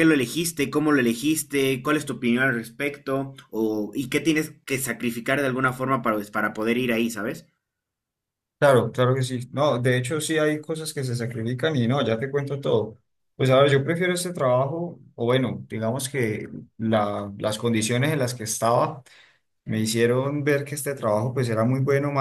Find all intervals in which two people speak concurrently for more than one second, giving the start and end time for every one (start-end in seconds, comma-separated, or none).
none